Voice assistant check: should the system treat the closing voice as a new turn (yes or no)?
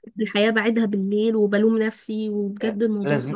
yes